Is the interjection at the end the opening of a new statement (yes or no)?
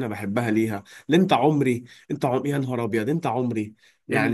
yes